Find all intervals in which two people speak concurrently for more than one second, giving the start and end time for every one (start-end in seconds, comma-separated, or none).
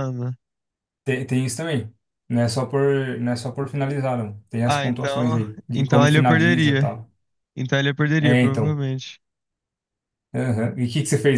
4.7-7.0